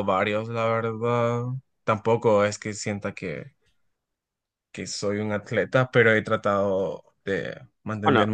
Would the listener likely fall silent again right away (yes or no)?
yes